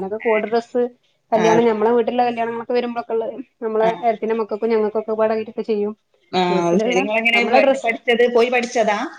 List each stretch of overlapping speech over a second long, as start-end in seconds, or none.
none